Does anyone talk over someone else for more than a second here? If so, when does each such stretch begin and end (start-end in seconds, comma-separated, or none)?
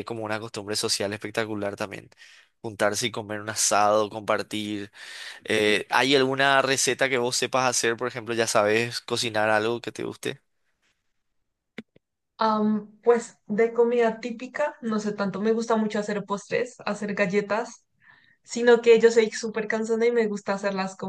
none